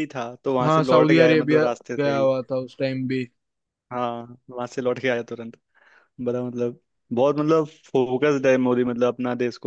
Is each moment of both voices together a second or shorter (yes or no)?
no